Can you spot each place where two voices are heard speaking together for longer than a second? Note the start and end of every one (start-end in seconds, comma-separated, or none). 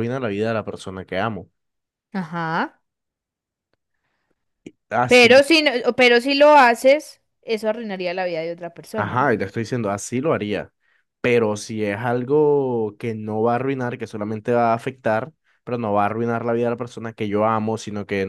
none